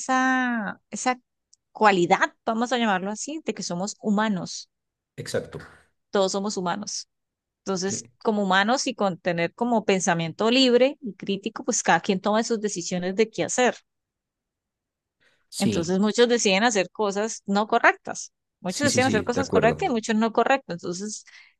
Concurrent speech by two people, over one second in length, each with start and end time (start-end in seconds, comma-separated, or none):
18.7-19.9